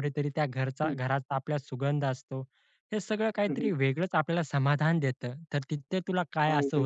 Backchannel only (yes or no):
yes